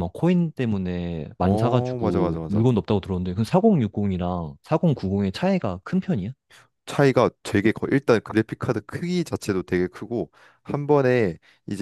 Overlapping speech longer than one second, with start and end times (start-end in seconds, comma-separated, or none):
1.4-2.6